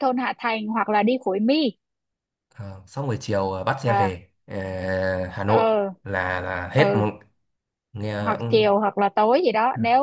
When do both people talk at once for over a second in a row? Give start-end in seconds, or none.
none